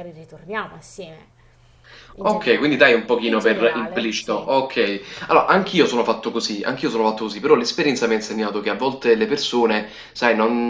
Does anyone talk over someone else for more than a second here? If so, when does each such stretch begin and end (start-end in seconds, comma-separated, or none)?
2.2-4.5